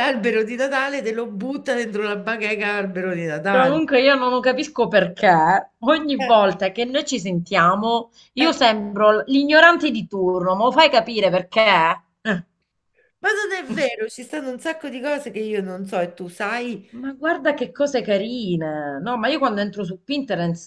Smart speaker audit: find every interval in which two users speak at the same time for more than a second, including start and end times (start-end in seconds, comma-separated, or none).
none